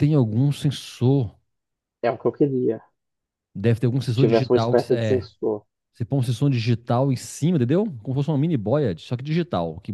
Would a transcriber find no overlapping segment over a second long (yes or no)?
no